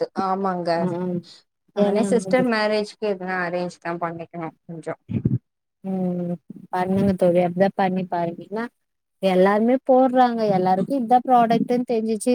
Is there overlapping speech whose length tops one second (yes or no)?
no